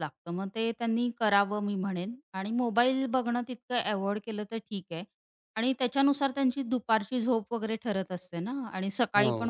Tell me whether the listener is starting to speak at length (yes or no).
no